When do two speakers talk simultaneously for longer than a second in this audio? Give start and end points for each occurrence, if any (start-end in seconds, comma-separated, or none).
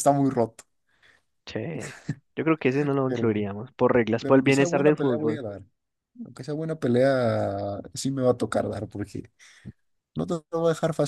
4.2-5.4